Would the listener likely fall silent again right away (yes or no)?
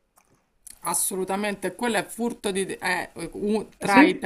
yes